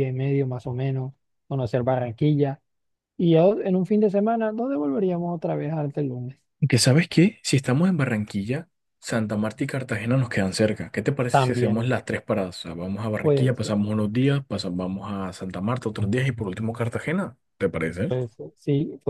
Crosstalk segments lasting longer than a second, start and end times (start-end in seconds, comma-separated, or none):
none